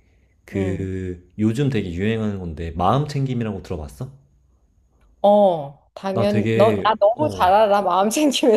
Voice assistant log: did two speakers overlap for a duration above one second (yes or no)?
yes